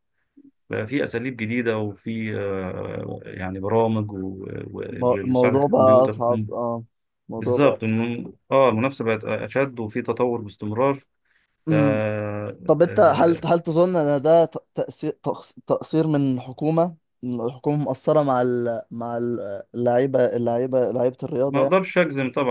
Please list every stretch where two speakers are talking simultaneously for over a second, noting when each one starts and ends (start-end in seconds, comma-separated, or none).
5.2-6.5